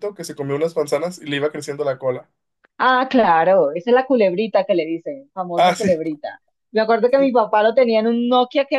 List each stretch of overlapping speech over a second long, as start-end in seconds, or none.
none